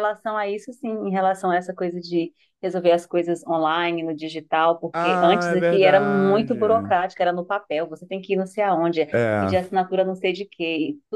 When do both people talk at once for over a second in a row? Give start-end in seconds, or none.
4.9-6.9